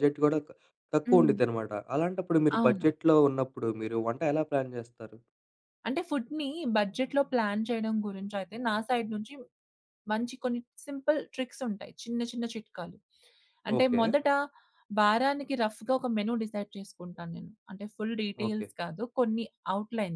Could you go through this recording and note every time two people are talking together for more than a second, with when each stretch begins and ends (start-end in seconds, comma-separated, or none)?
none